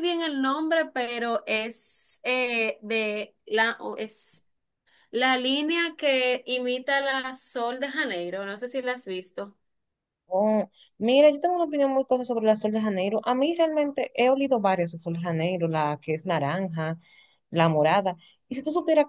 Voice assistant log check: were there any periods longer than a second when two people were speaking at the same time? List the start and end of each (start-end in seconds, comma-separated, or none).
none